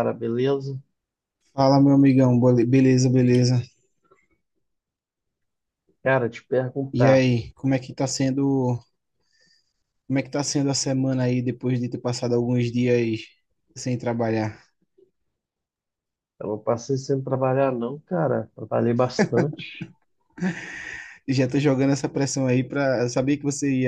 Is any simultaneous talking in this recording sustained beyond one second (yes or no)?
no